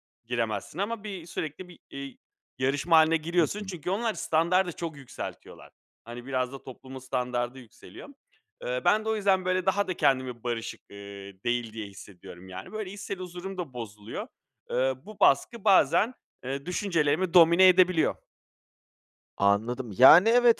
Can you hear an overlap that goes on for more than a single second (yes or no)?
no